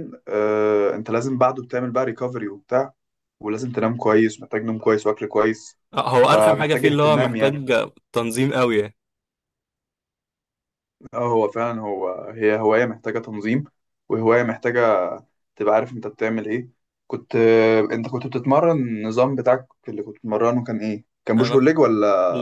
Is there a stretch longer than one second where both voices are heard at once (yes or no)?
yes